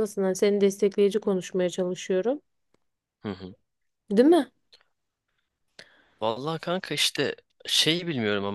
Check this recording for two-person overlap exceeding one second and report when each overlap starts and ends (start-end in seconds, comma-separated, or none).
none